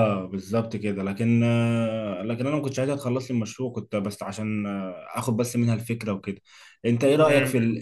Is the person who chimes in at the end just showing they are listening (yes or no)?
no